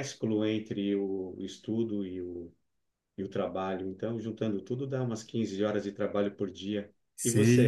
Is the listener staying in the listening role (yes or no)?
no